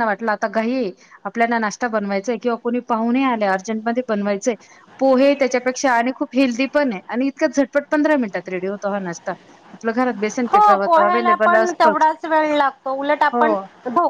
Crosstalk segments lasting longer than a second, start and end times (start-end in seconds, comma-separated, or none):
10.5-12.1